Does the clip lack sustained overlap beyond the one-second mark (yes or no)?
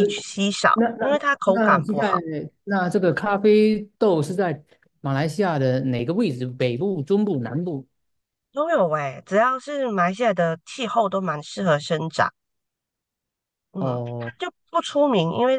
no